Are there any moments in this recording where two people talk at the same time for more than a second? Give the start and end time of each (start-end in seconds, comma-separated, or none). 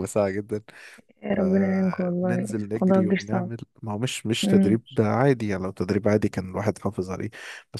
1.3-3.5